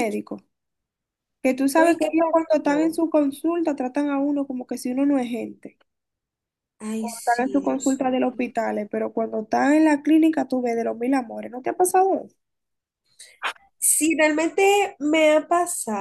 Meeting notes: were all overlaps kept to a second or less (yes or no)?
no